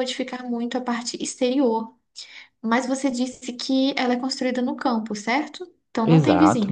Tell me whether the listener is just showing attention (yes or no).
no